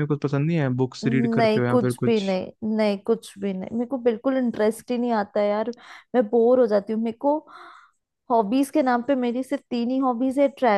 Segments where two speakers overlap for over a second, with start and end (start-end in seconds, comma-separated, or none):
1.1-2.4